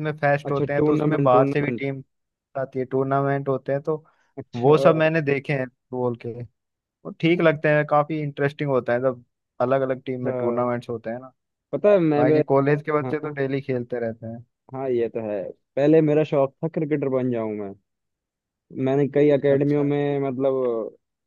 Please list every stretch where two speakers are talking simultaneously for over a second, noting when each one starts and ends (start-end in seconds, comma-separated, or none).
0.5-1.9